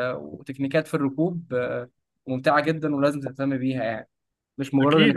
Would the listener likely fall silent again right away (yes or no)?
no